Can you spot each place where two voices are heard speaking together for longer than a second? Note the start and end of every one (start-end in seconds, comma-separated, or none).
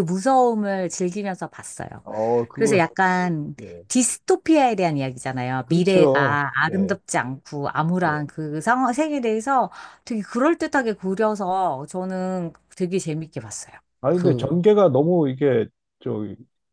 5.6-7.0